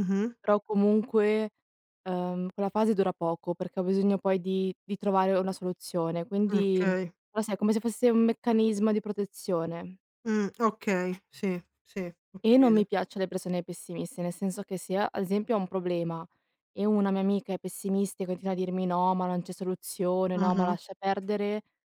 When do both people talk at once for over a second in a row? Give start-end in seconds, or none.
none